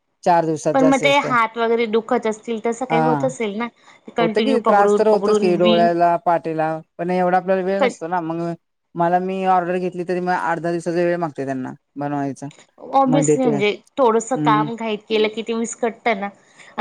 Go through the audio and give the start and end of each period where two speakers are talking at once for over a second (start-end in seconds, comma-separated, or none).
none